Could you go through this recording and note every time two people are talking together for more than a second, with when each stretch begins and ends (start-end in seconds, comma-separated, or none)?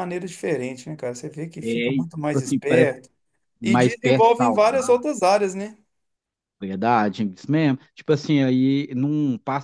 1.6-2.9, 3.6-5.0